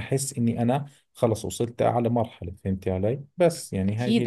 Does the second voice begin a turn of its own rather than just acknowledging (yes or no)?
yes